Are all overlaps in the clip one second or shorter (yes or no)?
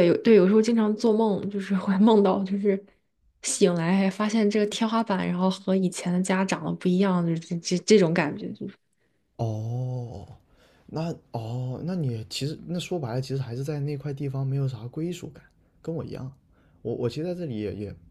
yes